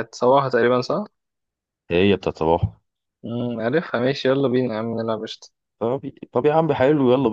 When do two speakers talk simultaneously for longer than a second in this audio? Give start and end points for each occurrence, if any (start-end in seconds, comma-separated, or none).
none